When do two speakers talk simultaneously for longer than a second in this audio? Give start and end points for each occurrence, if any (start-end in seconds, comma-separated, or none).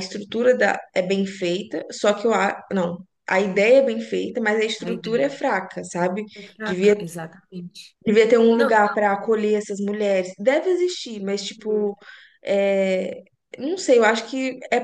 none